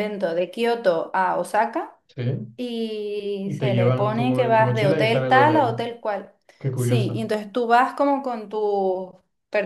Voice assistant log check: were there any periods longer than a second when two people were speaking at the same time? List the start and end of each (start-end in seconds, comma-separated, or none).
3.4-5.8